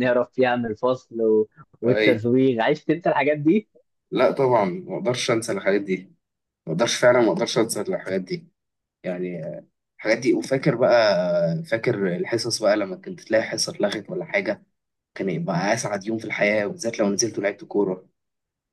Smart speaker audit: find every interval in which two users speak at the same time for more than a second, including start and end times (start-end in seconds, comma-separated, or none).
none